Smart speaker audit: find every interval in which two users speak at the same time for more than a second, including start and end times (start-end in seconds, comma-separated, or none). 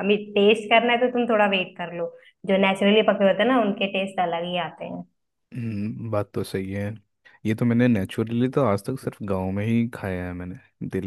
none